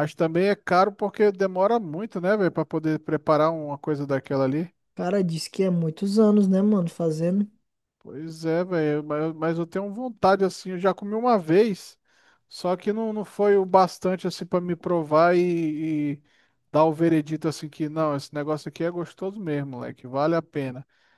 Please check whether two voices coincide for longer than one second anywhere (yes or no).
no